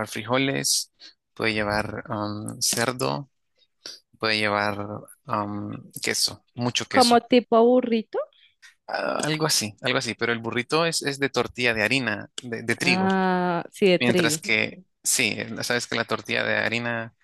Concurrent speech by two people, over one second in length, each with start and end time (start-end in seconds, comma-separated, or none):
none